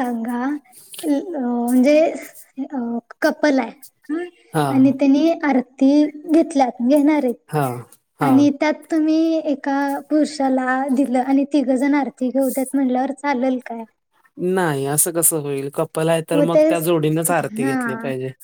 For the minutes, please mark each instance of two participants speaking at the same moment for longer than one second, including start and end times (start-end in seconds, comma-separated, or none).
none